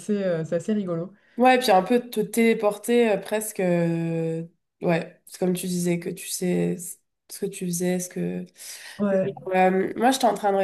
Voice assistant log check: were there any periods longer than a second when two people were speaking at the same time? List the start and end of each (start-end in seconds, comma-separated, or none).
none